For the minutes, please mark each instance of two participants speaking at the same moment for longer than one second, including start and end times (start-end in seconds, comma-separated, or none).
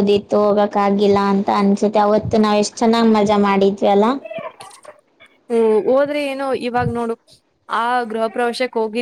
none